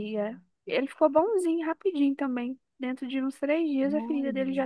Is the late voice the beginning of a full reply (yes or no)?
no